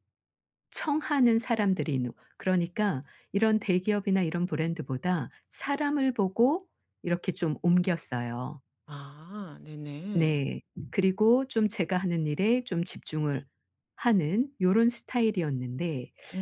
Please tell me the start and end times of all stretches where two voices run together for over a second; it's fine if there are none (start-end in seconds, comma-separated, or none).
none